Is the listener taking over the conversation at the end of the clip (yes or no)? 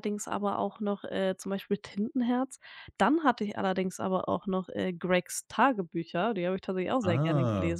yes